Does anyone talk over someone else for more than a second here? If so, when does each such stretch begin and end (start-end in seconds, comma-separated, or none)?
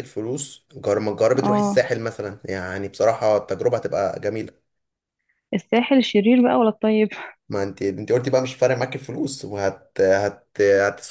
none